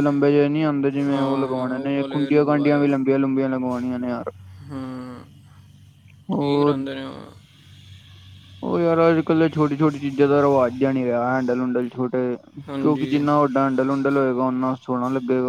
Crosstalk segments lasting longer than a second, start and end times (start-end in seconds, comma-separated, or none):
1.1-2.9